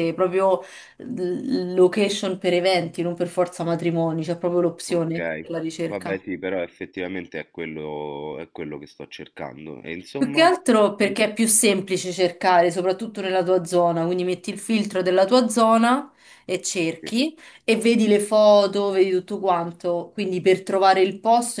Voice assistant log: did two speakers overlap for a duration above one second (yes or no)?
no